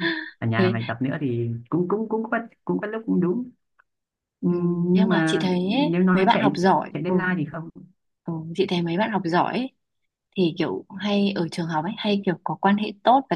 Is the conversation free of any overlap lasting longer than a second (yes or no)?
no